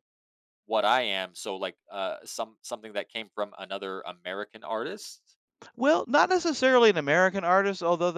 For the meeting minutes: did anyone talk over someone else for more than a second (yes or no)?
no